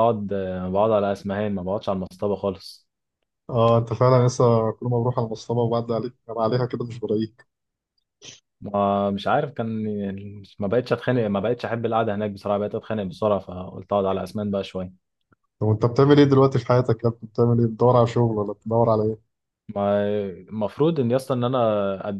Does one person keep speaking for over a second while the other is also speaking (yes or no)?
no